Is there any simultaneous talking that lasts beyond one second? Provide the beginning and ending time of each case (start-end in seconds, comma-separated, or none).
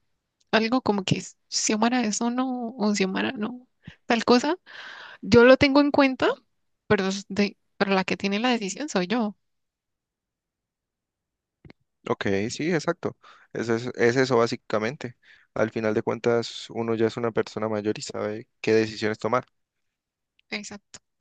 none